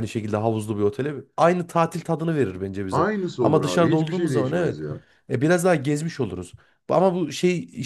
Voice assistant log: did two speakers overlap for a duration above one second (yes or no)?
yes